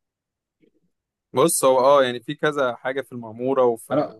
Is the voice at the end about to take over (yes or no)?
yes